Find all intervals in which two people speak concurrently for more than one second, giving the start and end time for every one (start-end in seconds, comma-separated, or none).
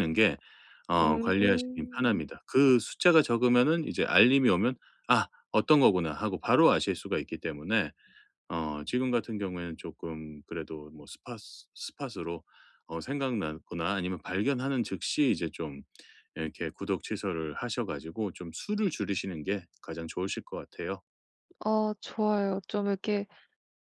1.0-2.2